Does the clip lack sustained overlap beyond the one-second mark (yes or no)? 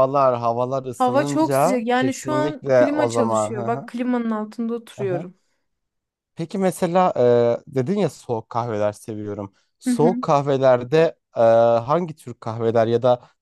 no